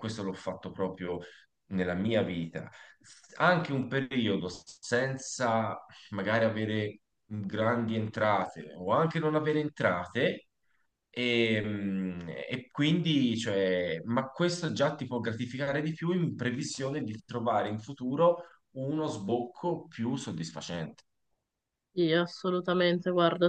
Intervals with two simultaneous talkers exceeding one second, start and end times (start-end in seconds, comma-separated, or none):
none